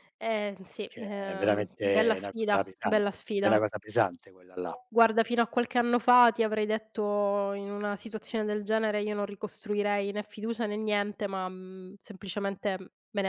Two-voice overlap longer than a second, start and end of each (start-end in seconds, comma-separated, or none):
0.8-3.6